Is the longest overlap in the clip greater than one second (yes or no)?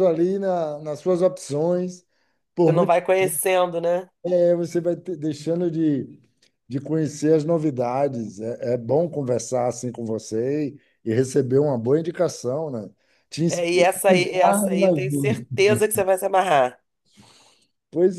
yes